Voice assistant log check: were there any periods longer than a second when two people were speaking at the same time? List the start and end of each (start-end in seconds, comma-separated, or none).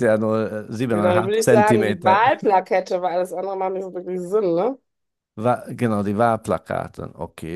0.9-2.3